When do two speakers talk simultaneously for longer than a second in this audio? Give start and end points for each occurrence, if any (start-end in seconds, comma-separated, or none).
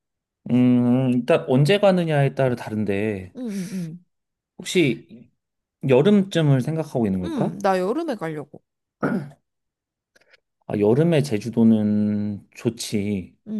none